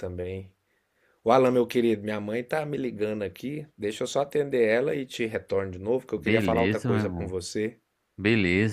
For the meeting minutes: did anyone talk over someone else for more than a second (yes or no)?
yes